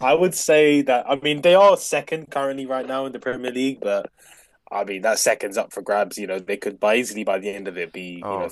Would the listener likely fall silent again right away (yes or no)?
no